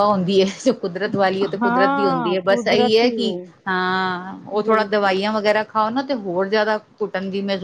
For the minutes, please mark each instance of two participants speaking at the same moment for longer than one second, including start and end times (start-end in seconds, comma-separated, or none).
1.6-3.1